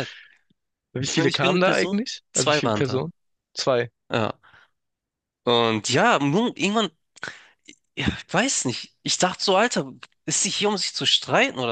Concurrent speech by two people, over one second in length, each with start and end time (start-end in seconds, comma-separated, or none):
1.1-3.0